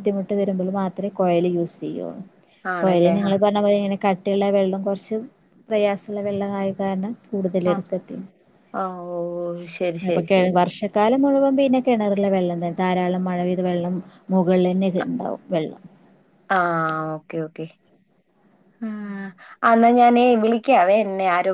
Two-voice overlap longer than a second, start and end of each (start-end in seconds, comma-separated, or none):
none